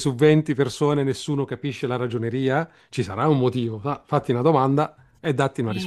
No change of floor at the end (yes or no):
no